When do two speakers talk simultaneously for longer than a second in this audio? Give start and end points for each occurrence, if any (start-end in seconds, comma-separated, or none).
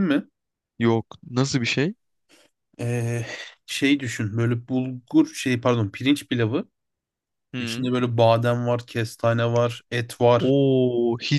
none